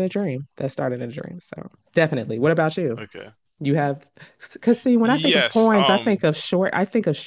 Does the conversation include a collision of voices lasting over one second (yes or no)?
yes